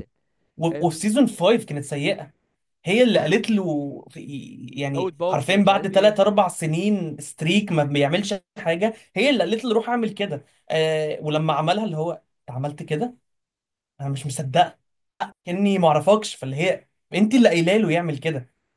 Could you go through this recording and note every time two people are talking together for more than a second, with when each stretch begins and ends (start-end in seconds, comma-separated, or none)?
4.9-6.2